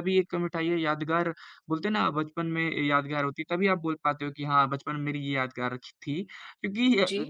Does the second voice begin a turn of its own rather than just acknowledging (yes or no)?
no